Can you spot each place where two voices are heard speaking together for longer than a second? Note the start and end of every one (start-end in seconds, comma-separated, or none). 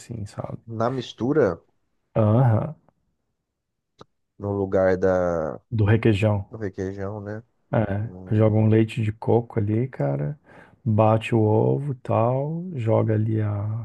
none